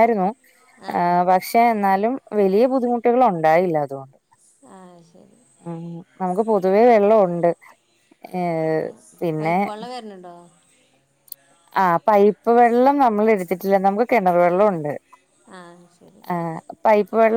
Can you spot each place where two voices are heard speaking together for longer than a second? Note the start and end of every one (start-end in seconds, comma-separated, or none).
none